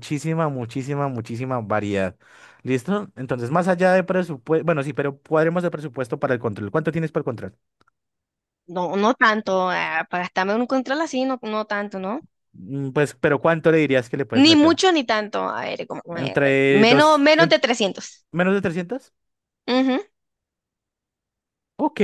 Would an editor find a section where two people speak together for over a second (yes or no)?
yes